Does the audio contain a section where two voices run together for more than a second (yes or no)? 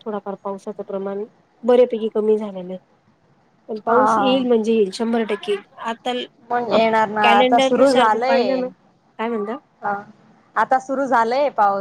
yes